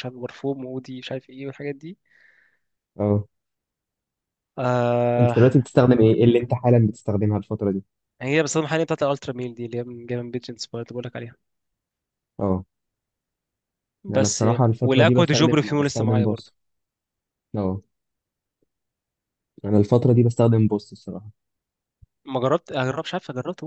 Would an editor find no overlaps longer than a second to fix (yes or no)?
no